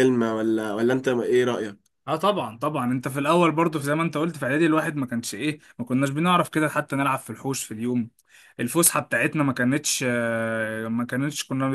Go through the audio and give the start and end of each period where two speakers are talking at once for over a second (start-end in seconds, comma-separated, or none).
none